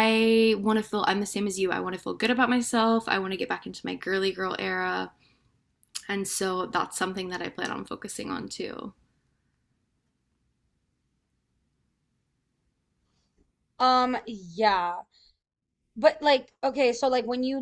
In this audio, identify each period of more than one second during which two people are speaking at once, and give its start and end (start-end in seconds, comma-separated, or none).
none